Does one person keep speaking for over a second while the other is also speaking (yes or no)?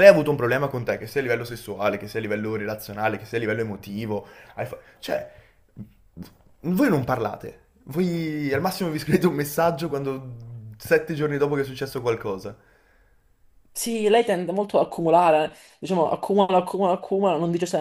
no